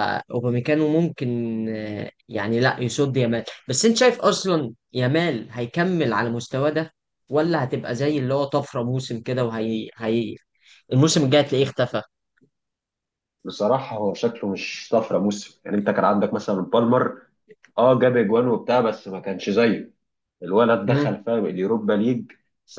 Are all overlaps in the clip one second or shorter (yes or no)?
yes